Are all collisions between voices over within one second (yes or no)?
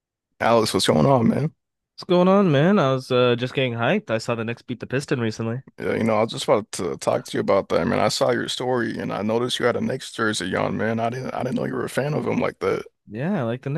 yes